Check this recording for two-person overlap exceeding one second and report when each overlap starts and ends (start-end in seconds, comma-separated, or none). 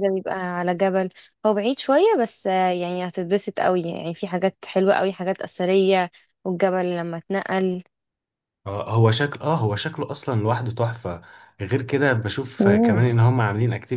none